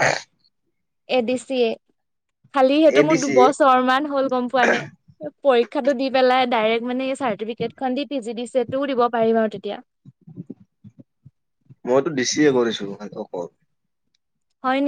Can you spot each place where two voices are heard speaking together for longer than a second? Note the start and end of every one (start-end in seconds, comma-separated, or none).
none